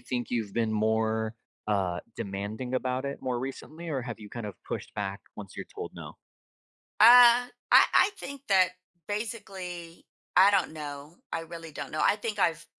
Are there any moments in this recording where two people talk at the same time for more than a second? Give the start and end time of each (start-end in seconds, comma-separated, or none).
none